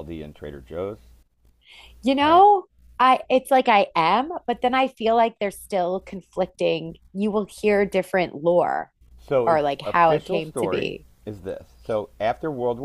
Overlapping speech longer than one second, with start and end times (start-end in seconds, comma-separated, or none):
9.4-11.1